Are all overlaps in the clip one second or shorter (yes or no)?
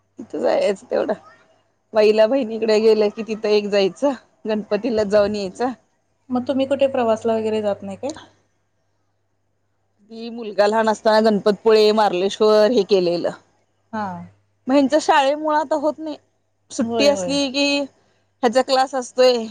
yes